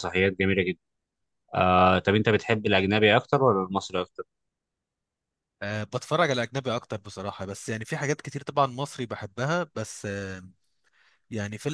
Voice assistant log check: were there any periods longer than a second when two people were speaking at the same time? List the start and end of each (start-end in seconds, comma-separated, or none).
none